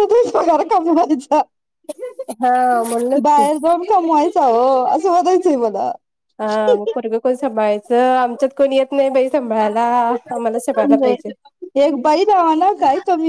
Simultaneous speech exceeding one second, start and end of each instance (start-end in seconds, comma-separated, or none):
none